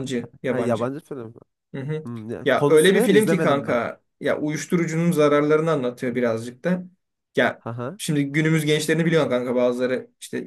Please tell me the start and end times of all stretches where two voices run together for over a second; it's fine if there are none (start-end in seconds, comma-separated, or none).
2.4-3.8